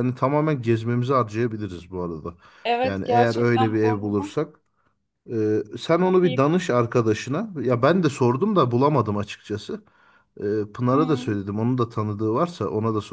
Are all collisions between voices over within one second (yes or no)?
no